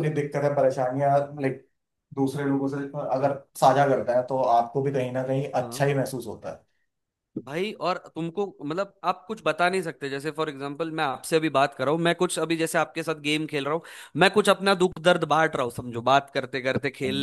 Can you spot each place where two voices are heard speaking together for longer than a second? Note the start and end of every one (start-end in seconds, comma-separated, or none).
none